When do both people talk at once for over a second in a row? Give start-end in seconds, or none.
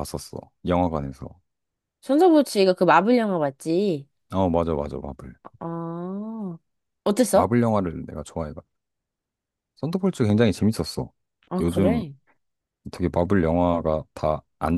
none